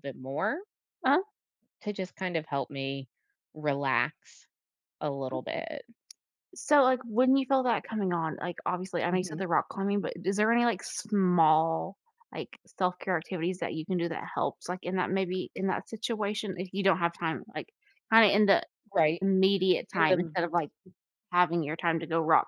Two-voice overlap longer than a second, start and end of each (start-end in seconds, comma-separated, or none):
none